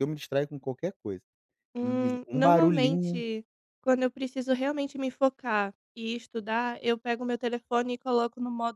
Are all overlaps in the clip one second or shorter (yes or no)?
no